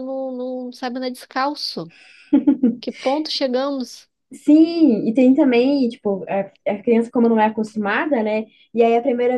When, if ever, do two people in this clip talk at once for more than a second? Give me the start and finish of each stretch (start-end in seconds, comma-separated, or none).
none